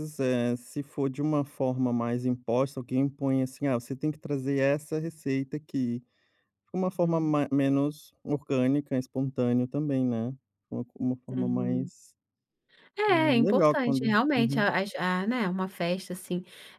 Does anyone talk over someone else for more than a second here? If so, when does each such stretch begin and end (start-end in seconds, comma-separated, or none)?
13.1-14.7